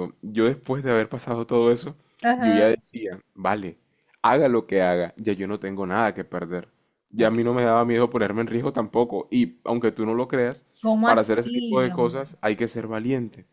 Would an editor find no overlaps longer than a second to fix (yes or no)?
no